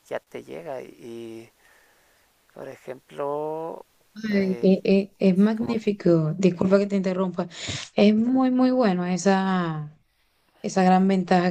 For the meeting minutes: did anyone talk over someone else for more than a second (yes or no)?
no